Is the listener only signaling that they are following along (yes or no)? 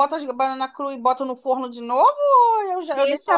no